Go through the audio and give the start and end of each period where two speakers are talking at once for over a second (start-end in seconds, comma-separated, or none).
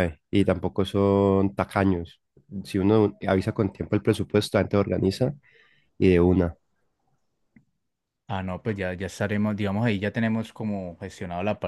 none